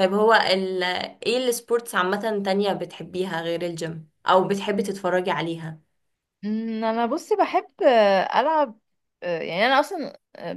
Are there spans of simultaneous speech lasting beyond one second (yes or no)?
no